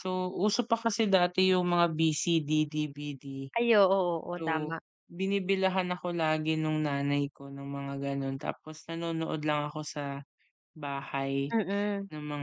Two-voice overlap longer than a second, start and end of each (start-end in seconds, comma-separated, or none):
none